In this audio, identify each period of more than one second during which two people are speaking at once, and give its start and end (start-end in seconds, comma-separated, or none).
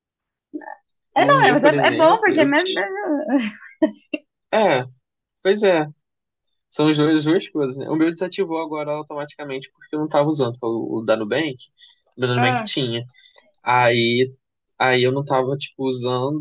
1.2-2.9